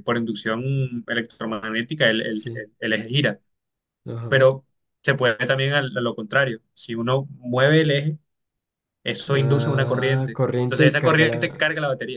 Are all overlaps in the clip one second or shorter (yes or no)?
no